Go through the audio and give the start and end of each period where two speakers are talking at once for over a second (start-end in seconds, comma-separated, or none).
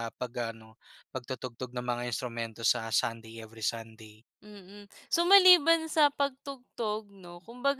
none